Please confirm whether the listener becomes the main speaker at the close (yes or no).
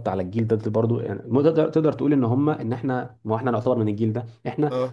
no